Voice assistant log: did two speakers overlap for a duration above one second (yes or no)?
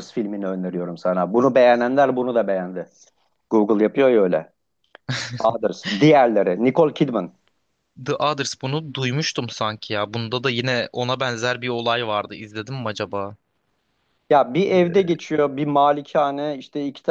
no